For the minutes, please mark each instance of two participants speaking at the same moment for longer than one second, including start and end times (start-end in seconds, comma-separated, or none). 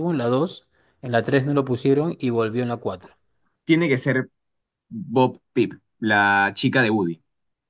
none